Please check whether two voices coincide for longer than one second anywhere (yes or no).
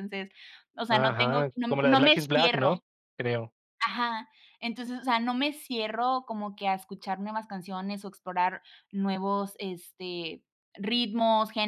yes